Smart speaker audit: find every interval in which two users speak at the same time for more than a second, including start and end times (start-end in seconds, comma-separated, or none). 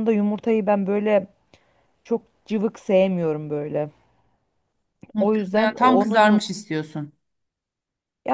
5.2-6.5